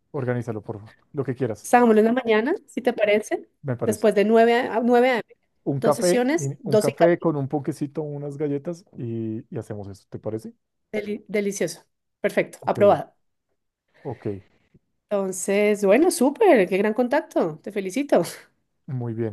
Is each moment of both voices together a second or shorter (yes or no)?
no